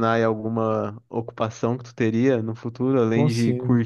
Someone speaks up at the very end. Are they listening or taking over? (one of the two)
listening